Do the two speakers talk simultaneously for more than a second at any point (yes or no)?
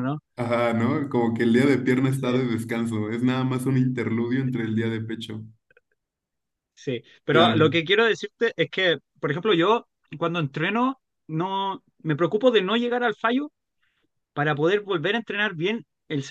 no